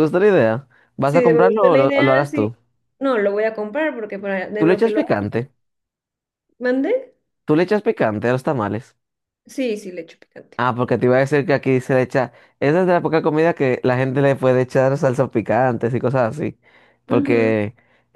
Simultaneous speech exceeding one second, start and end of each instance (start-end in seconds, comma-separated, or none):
1.0-2.5